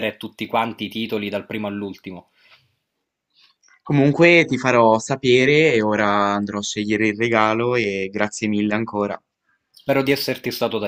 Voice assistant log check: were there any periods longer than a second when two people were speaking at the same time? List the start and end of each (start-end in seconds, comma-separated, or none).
none